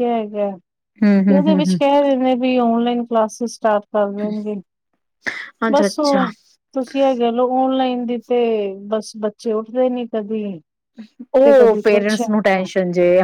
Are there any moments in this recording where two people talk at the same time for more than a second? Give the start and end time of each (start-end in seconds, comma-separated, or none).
11.4-12.7